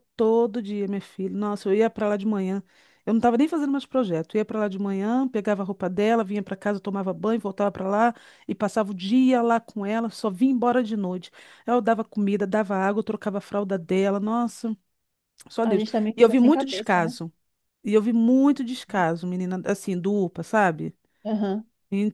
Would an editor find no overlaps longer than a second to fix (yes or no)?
no